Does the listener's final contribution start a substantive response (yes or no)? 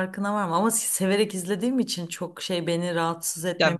yes